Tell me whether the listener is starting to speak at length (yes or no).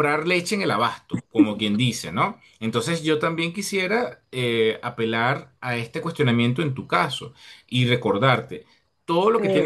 no